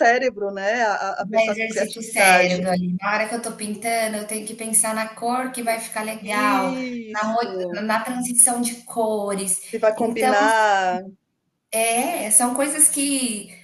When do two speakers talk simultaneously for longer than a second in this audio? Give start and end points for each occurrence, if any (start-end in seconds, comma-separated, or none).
1.2-2.6